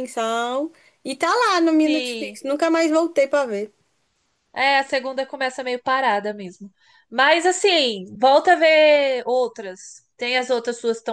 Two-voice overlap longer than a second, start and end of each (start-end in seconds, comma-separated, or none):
none